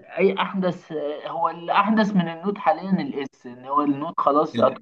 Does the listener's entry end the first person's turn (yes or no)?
no